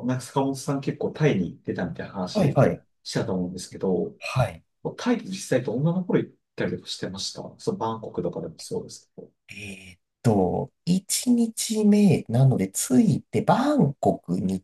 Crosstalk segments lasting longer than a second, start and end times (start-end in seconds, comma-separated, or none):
none